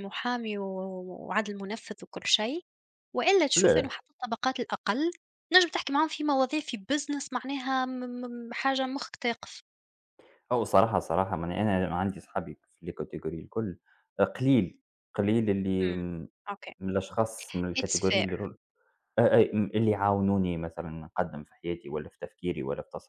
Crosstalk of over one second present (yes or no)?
no